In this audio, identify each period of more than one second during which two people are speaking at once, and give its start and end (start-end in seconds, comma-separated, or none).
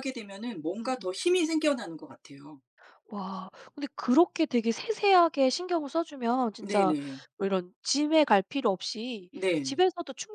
none